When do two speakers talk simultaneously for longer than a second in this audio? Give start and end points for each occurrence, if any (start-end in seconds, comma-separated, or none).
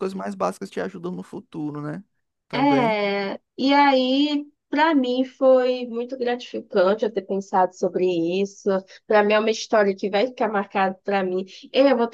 none